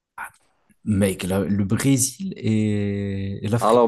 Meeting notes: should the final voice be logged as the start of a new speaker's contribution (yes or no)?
yes